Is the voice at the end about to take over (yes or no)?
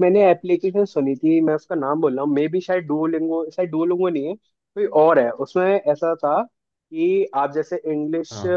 no